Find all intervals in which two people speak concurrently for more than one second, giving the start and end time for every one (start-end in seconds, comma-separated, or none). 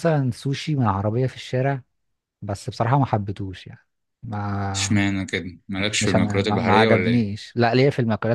6.0-7.3